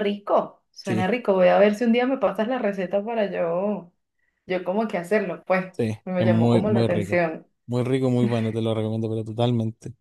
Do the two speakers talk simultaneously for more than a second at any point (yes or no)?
yes